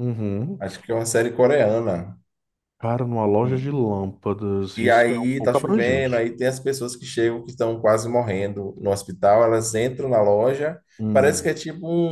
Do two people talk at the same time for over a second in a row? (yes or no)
yes